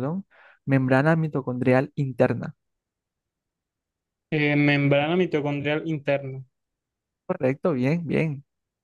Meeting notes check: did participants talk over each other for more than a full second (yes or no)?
no